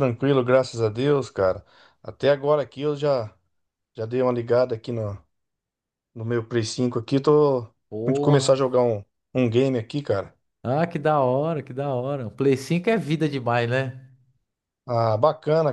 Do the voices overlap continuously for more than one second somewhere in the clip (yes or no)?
no